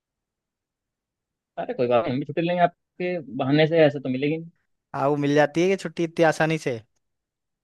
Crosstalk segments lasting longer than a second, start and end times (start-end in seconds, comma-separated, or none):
none